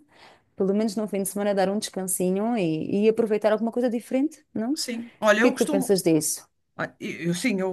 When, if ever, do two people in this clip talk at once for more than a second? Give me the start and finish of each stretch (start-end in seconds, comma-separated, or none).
none